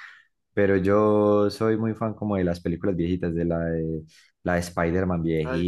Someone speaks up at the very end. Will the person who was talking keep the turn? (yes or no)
yes